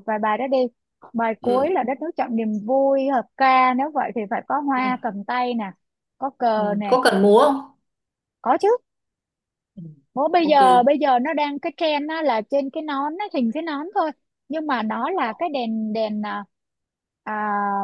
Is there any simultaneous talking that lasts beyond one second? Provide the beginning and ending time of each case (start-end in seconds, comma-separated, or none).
none